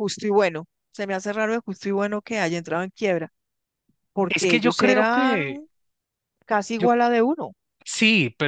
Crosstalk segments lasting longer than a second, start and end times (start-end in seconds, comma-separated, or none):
4.3-5.6